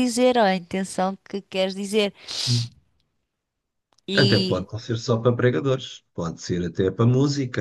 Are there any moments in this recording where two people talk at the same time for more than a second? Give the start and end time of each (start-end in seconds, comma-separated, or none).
none